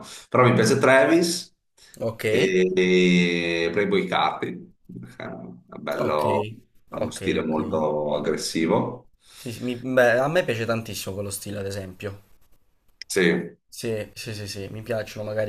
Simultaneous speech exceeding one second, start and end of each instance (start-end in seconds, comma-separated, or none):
none